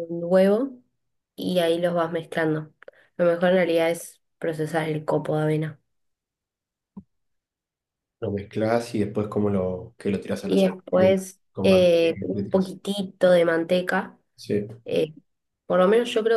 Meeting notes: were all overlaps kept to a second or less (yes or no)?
no